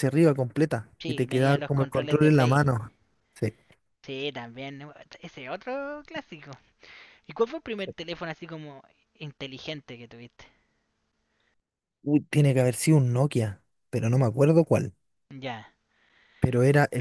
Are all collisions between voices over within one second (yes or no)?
no